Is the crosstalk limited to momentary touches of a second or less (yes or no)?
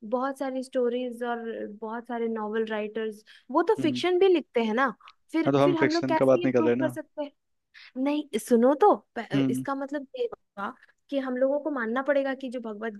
no